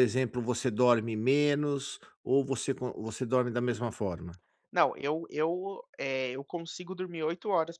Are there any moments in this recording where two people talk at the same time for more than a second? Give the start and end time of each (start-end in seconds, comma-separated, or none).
none